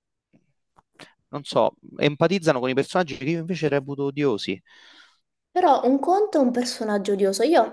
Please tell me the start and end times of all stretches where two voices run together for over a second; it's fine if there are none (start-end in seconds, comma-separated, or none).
none